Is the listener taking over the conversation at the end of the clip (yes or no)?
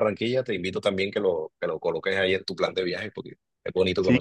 yes